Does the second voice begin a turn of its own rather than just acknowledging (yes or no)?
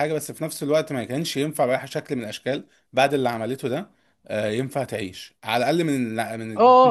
yes